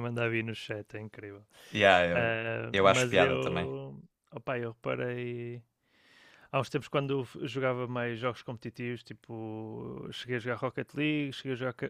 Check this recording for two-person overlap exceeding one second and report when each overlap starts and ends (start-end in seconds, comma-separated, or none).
2.1-3.7